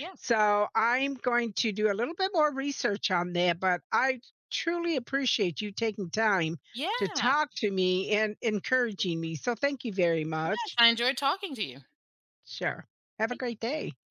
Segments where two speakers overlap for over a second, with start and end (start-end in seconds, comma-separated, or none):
none